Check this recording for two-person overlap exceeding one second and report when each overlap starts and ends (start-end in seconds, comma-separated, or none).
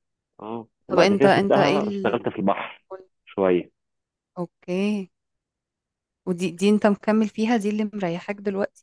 0.9-2.3